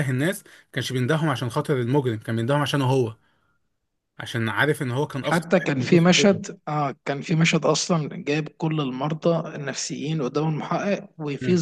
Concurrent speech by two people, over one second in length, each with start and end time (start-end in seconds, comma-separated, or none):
5.2-6.4